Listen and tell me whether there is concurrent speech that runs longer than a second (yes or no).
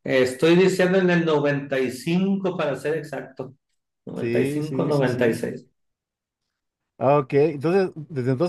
yes